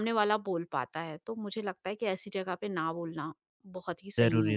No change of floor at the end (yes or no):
no